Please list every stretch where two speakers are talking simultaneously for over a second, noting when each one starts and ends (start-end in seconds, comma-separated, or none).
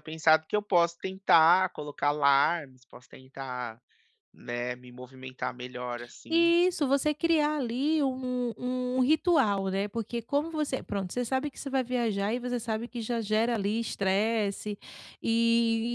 none